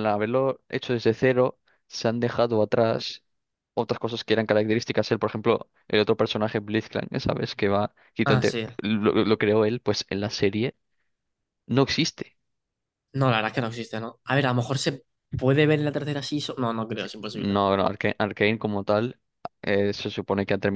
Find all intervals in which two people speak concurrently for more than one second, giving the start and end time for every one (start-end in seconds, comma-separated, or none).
none